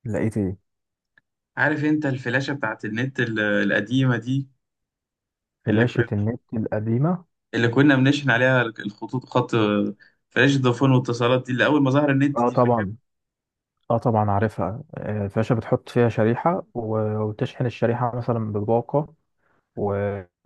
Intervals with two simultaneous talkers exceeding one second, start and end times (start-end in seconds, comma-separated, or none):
none